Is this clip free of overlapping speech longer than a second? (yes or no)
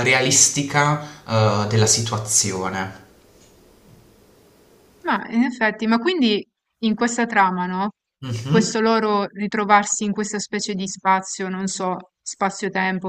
yes